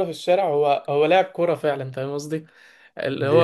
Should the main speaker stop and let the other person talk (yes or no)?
no